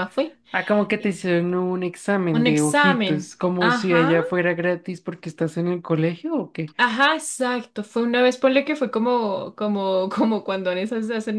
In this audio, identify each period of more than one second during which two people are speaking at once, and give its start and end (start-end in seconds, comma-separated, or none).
2.3-4.2